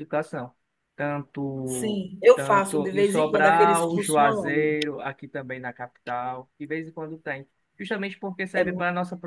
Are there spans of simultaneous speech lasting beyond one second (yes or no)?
yes